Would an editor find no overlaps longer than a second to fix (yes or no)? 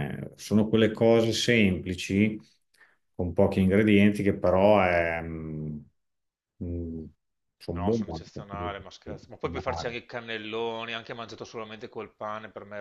no